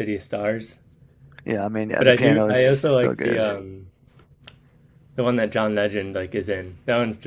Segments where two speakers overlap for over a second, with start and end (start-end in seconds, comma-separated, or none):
2.0-3.5